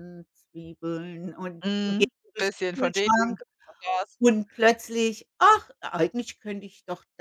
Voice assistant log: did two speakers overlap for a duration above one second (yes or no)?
yes